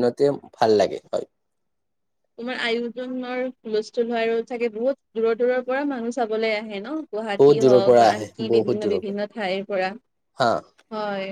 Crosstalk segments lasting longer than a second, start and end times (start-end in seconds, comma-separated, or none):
7.4-9.2